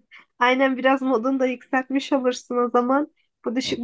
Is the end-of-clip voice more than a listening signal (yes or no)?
no